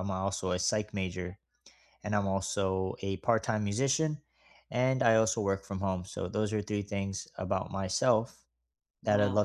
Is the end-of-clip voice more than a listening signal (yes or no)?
no